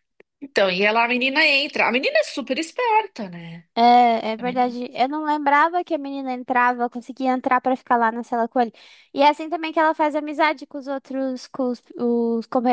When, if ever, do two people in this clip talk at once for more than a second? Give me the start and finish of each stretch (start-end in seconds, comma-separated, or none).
none